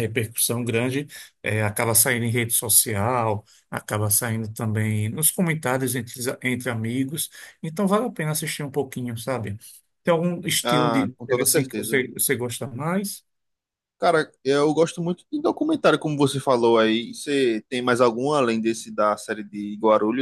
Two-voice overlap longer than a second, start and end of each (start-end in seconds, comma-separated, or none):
10.6-12.1